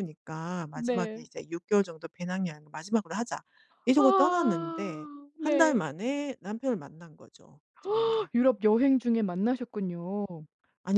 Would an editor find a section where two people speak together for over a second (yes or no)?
yes